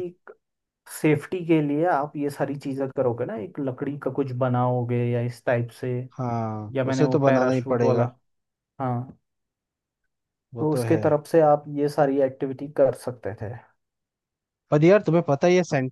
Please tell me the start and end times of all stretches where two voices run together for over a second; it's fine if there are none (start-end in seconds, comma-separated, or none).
6.7-8.1